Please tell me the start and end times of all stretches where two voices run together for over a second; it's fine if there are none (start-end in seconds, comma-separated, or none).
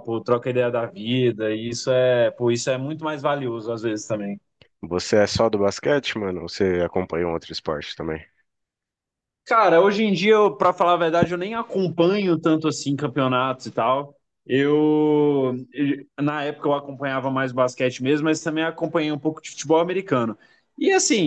none